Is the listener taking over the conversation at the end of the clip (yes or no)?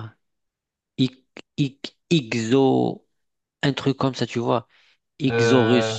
no